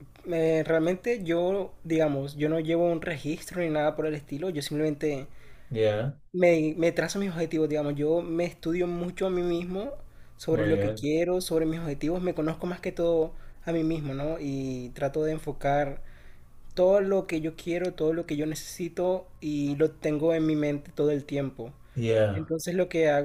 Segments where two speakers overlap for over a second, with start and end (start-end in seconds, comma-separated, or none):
none